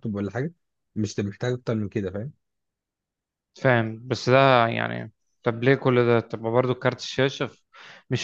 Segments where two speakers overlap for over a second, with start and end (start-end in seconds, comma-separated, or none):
none